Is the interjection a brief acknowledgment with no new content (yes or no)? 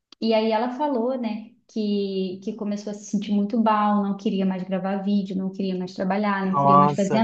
yes